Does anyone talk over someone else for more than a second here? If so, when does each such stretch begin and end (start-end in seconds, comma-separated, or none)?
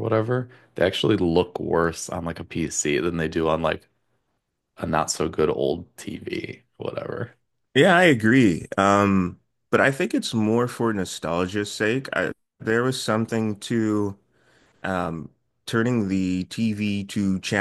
none